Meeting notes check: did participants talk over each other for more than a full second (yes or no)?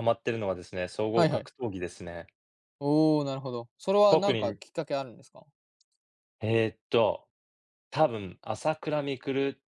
no